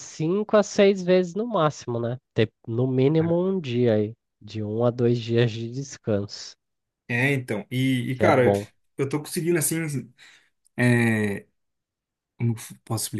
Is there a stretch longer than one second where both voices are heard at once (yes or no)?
no